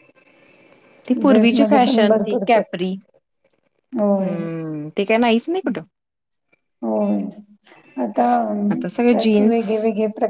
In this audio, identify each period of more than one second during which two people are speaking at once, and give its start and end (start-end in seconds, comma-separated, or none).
1.2-2.9